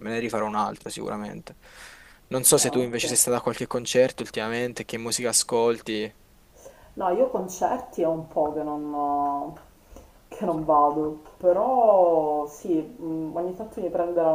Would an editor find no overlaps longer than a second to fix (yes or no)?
yes